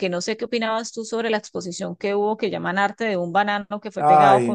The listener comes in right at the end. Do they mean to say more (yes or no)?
yes